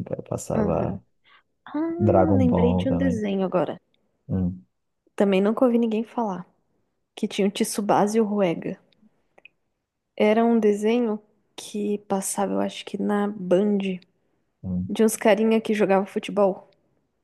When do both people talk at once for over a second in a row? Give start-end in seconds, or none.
2.0-3.2